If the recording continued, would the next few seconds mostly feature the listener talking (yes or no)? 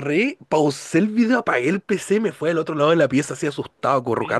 yes